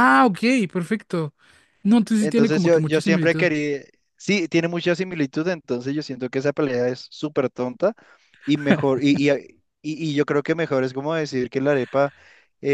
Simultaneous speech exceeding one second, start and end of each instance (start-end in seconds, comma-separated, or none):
2.2-3.5